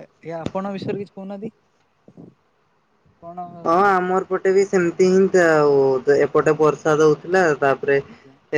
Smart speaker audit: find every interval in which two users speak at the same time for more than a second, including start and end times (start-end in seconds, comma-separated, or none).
none